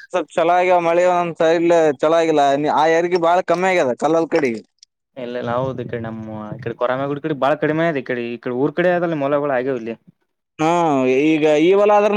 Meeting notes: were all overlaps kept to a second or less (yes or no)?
yes